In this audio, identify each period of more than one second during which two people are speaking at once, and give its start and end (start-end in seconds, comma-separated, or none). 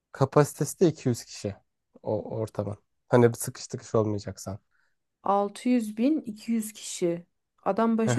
none